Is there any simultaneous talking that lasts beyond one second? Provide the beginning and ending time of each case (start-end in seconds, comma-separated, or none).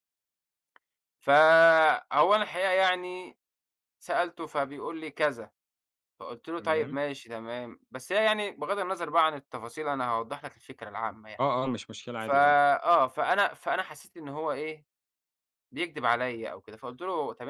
none